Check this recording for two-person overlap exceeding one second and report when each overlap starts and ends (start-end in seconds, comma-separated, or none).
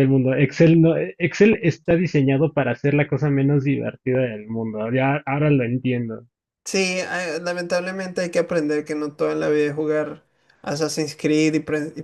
none